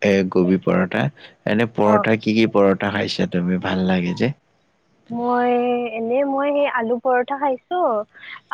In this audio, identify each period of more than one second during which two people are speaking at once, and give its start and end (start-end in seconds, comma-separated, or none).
none